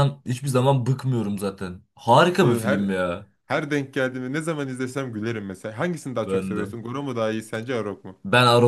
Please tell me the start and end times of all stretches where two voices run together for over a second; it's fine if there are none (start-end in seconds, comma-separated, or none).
none